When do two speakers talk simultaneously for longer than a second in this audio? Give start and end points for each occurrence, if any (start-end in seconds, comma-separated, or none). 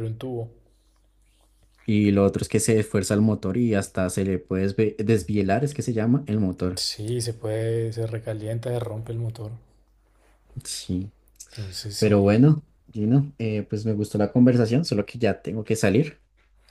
none